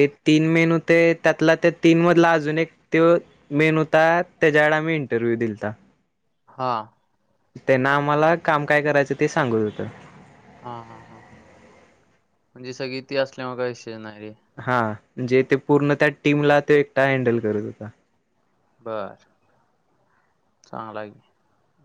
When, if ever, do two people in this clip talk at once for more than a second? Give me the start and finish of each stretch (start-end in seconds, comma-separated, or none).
none